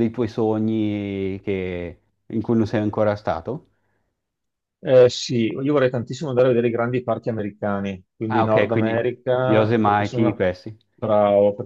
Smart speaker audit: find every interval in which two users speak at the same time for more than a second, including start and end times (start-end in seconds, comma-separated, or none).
8.3-10.4